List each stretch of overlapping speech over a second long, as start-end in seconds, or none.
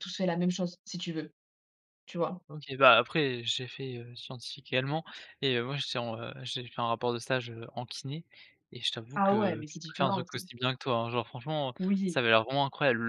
9.2-10.5